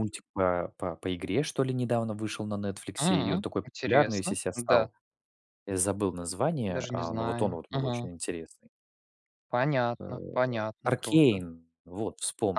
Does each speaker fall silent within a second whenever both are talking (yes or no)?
no